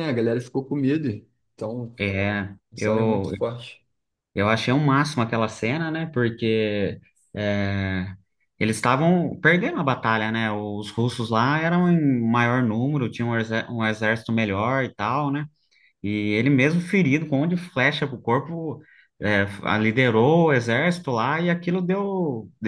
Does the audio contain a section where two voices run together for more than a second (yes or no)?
no